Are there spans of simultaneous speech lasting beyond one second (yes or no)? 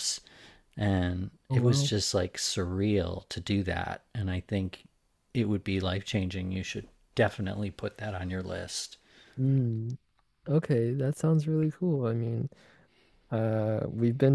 no